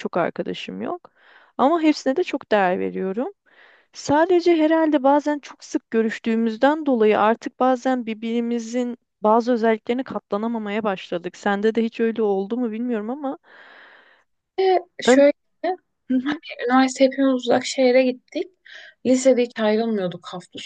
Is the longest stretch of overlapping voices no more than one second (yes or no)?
yes